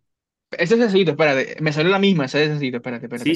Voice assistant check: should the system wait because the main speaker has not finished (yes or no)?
no